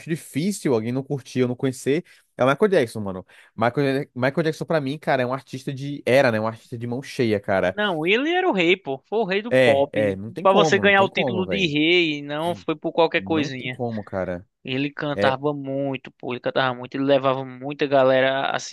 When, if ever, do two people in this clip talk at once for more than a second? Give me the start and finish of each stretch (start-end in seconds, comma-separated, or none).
9.5-11.7